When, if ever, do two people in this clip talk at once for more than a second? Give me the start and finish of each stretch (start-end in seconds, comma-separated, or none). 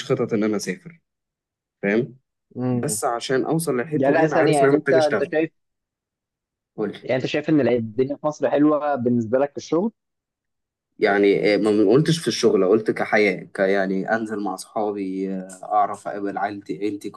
3.9-5.3